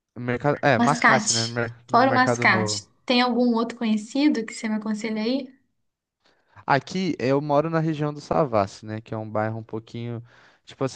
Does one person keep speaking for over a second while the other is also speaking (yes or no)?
yes